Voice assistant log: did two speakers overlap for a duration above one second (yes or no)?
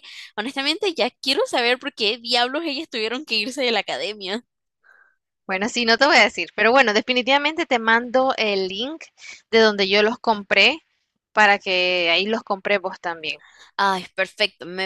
no